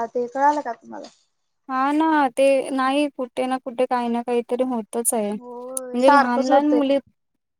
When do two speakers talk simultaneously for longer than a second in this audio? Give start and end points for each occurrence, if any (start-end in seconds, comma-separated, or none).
5.4-6.8